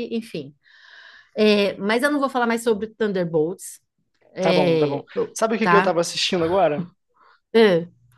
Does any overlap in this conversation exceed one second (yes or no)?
yes